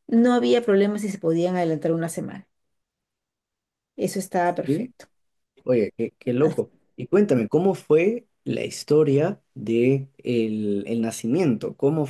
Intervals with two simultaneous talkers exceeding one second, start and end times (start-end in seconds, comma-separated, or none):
none